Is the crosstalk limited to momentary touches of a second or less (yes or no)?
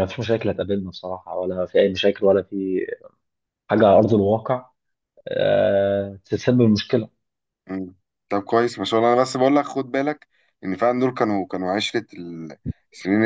yes